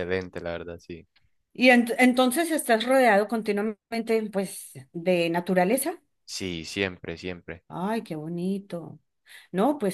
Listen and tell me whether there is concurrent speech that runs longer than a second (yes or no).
no